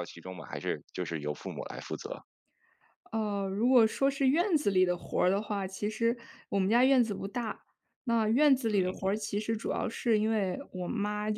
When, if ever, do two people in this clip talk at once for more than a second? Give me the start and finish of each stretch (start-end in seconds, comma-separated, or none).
none